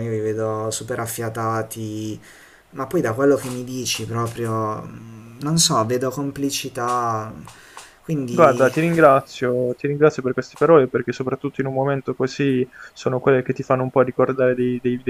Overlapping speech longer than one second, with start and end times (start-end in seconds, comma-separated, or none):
none